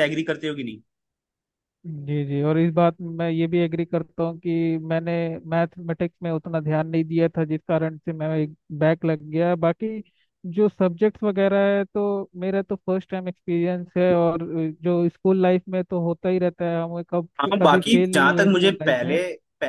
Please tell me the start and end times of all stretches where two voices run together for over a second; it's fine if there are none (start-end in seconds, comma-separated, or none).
17.4-19.2